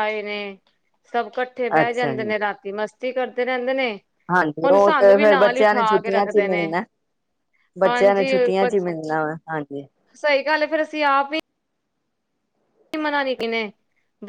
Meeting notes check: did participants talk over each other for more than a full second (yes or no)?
yes